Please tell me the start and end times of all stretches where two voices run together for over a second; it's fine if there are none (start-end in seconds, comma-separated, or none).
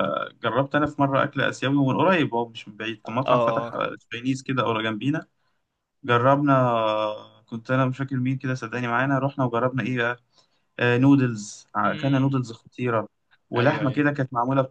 none